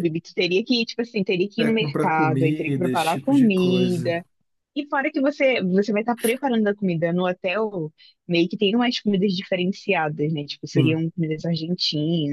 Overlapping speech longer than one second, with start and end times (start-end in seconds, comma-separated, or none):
1.6-4.1